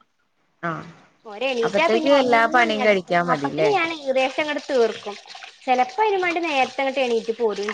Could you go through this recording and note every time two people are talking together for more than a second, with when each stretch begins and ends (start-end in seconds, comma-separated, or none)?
1.7-3.7